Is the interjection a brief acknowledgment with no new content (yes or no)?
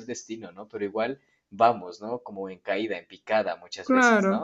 no